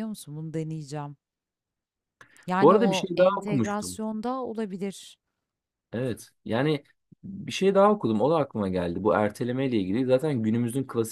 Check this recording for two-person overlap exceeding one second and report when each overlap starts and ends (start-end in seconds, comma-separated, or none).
2.6-4.0